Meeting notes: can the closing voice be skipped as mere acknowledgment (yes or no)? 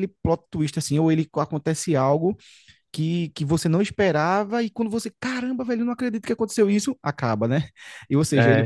yes